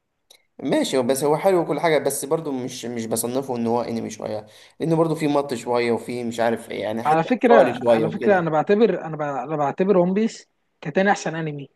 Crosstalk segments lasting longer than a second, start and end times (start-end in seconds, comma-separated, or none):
7.1-8.5